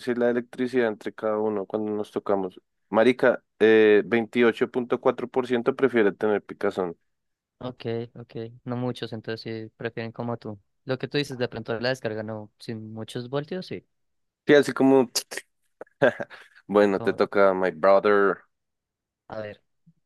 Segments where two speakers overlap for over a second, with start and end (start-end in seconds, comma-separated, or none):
none